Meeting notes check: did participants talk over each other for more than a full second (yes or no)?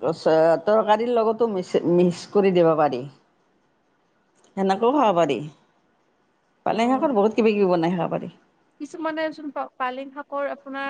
no